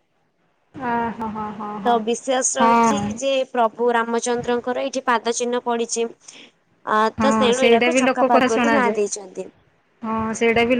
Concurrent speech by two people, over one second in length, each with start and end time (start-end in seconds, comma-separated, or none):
7.2-9.0